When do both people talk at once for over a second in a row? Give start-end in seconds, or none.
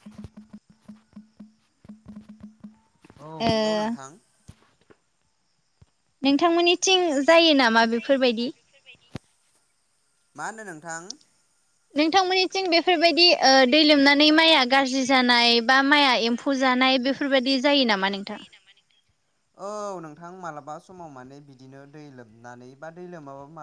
12.7-17.2